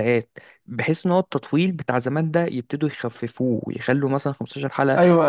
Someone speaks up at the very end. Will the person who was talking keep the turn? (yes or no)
no